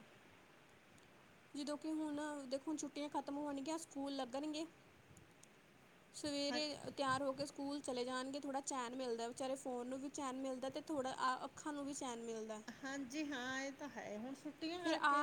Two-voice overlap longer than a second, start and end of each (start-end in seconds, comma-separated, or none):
none